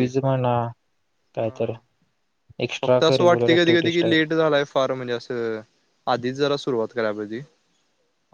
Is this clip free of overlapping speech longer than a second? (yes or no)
no